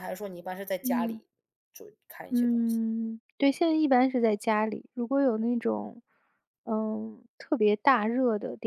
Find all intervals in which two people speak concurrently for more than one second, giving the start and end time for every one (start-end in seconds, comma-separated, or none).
none